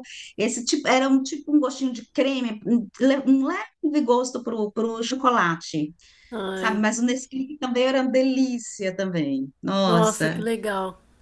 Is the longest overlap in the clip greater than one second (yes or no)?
no